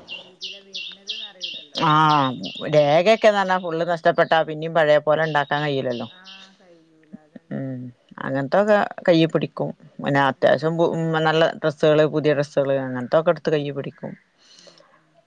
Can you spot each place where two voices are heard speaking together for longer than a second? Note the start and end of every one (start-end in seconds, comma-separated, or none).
none